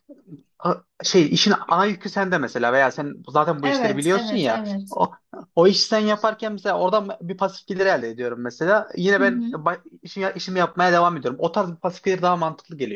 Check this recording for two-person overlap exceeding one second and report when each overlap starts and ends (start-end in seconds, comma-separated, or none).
3.6-5.0